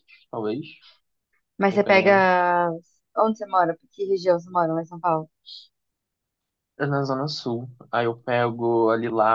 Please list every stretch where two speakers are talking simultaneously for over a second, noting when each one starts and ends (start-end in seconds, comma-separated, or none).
none